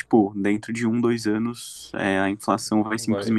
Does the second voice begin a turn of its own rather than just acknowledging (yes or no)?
yes